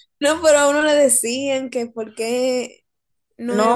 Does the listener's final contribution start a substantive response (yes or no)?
yes